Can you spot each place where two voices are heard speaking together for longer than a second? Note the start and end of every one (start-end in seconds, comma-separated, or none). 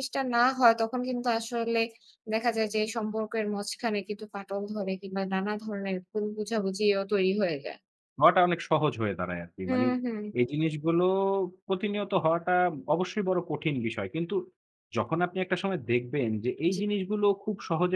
none